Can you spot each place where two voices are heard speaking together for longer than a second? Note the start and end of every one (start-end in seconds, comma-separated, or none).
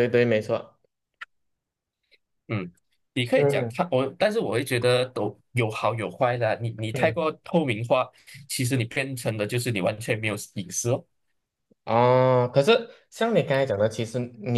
none